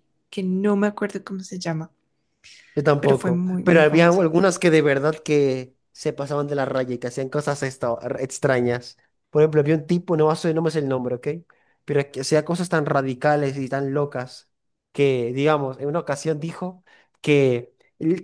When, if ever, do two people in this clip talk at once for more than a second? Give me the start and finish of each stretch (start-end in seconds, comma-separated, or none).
3.0-4.2